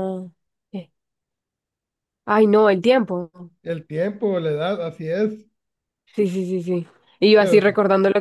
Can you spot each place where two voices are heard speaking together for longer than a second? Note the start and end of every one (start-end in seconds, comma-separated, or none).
none